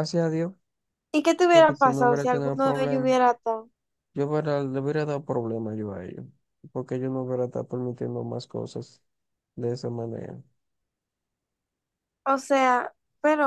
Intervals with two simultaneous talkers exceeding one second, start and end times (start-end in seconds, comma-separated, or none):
1.5-3.1